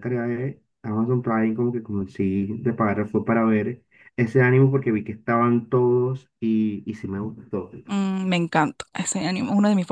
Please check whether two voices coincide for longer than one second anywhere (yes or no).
no